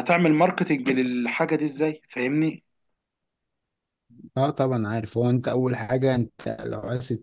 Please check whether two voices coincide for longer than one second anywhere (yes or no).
no